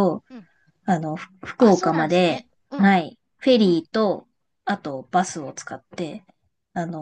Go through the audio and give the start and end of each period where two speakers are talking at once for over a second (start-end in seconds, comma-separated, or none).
1.6-3.0